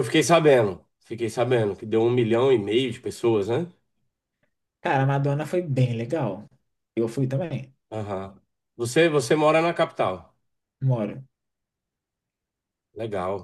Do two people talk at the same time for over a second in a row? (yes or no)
no